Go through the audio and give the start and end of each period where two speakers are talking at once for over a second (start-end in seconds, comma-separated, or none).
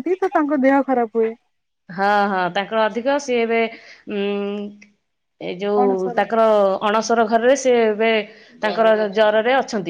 none